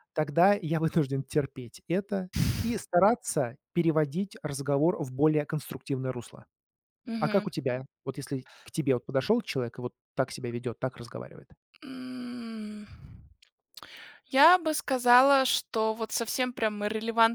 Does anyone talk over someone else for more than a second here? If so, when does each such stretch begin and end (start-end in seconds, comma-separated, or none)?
none